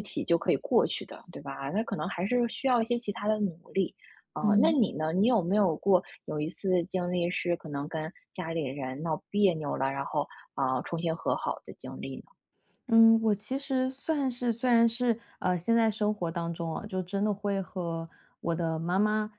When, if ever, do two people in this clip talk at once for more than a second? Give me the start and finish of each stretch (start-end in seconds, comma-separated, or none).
none